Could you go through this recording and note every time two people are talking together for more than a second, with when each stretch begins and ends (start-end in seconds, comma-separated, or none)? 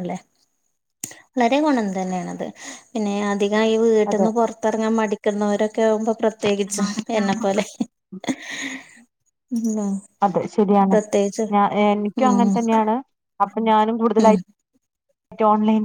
none